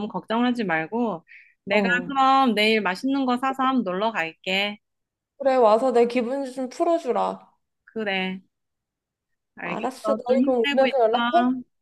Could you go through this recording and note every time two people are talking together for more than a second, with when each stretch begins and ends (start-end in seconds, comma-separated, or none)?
9.6-10.9